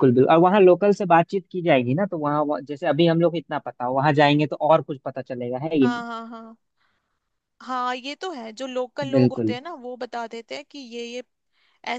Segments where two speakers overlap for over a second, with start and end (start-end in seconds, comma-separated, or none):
none